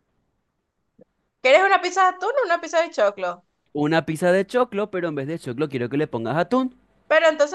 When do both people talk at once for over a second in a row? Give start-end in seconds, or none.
none